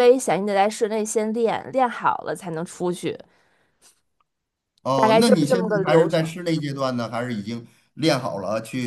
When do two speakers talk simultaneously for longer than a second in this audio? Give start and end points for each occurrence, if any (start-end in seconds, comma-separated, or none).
4.9-6.3